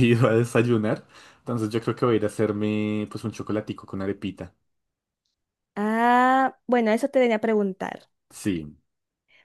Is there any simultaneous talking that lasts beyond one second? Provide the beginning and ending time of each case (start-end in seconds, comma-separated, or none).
none